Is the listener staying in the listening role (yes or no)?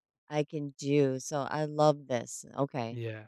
no